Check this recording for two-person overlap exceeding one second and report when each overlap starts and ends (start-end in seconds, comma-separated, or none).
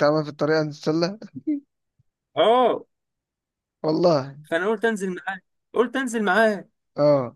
none